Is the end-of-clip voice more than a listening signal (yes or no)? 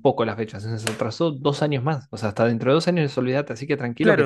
yes